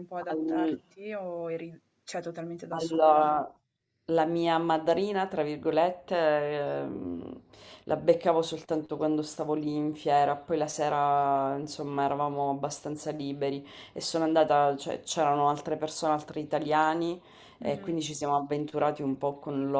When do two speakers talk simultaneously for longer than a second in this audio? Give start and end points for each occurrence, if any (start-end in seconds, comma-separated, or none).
none